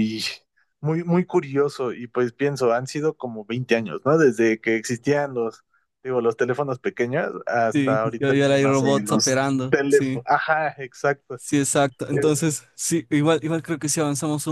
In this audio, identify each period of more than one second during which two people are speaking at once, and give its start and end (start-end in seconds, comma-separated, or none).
7.7-10.2